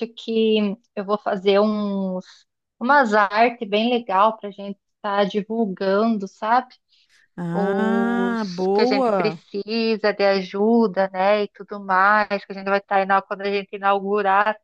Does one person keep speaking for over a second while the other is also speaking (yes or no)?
yes